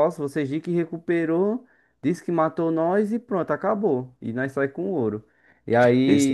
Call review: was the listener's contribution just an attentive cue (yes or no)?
yes